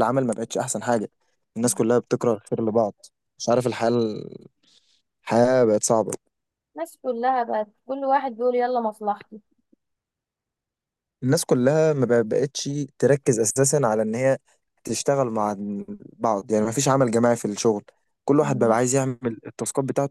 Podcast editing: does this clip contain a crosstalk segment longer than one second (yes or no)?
no